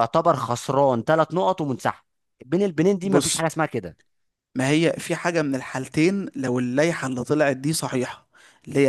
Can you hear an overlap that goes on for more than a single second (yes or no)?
no